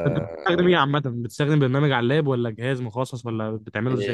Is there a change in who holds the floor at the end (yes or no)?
yes